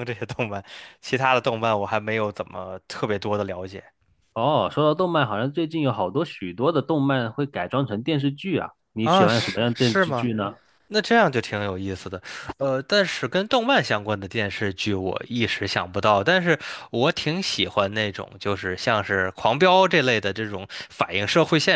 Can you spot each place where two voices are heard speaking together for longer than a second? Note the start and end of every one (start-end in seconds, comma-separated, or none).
9.0-10.3